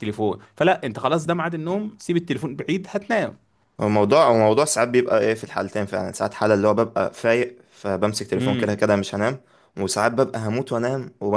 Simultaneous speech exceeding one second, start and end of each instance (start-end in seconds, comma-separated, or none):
none